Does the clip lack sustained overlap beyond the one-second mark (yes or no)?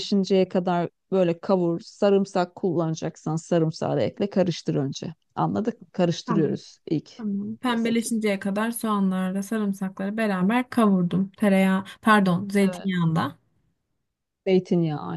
yes